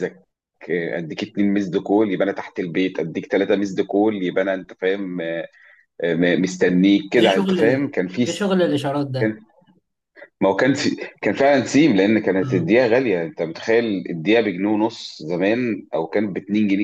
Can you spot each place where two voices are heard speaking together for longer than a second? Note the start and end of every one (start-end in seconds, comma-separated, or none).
none